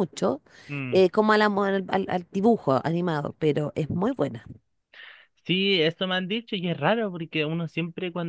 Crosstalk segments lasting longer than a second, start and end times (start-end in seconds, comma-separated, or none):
none